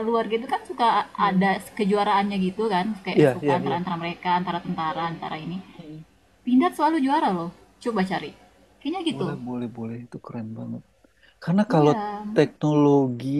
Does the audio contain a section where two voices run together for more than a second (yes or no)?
no